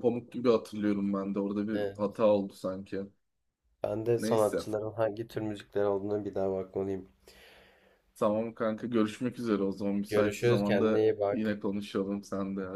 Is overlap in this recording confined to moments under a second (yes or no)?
no